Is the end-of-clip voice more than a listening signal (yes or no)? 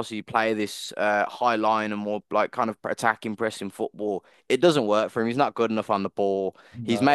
no